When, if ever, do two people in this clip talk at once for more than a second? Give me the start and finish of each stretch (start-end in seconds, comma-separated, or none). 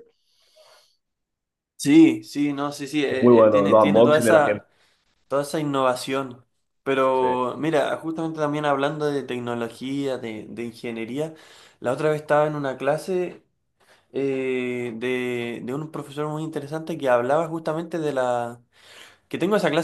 3.1-4.6